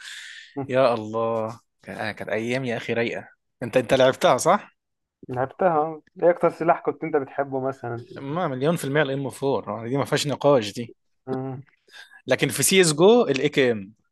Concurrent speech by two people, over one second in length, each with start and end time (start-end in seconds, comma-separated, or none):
none